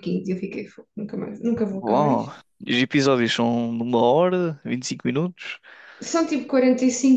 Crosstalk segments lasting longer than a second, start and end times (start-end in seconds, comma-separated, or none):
none